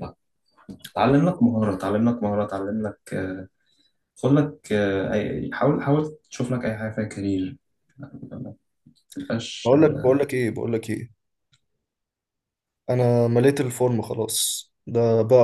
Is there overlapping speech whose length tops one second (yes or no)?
no